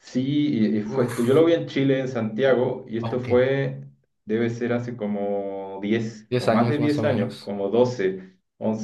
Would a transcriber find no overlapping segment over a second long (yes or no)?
no